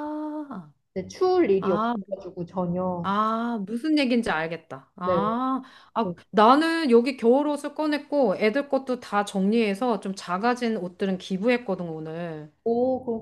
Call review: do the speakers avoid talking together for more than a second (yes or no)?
yes